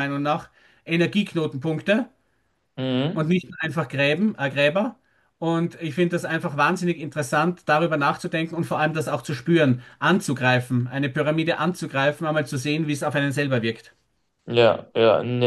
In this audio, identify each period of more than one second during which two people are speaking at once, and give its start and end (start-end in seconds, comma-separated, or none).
none